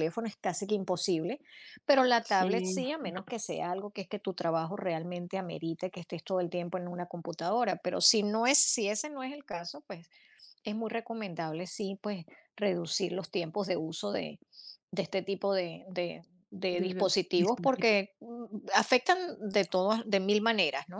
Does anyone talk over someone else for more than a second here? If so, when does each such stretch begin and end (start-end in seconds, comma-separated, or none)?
16.7-18.1